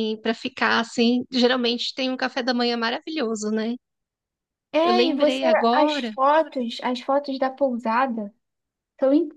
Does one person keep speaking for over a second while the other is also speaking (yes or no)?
yes